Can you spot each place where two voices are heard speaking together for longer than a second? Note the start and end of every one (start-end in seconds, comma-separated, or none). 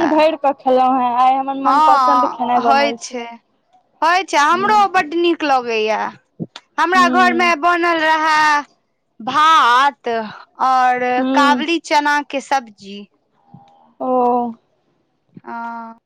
1.6-3.2